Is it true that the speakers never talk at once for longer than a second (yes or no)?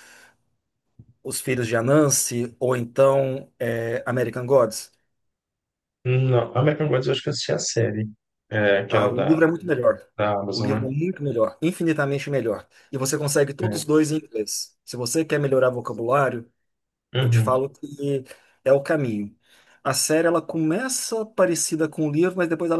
yes